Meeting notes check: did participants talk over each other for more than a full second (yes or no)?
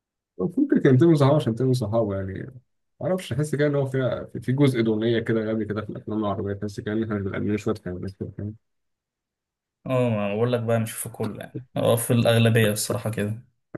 no